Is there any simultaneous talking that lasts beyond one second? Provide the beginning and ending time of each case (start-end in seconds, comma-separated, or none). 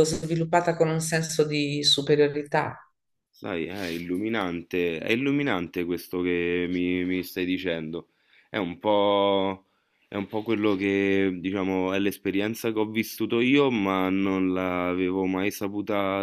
none